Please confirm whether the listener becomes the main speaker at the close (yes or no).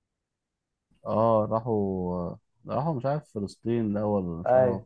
yes